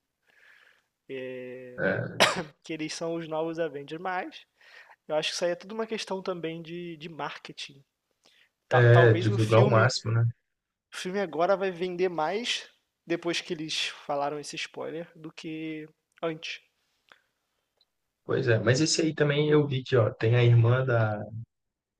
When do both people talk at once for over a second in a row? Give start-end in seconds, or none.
8.7-9.9